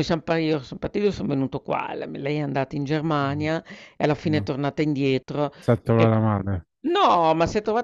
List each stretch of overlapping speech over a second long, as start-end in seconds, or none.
none